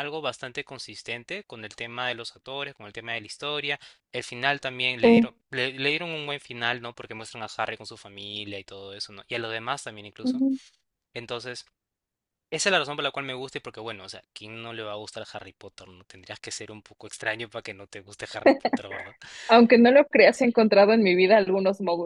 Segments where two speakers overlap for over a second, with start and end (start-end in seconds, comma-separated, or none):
none